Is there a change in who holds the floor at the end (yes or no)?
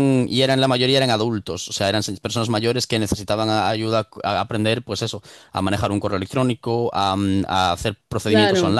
no